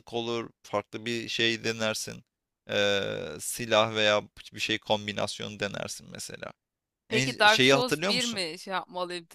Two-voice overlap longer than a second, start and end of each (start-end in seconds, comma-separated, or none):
7.1-8.4